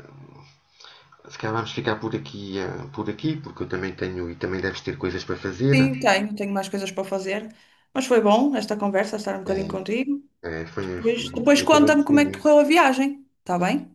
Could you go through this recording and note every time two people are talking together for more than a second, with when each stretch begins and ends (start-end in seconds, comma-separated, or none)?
10.9-12.6